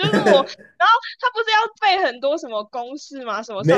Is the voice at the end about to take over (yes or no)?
yes